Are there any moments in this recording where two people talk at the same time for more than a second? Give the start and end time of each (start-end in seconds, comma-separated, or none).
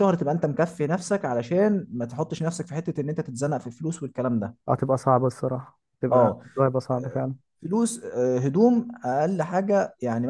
none